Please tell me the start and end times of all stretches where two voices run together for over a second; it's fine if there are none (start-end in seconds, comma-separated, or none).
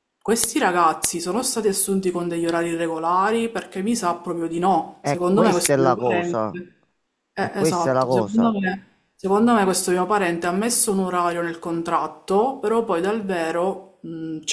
5.0-6.5, 7.3-8.6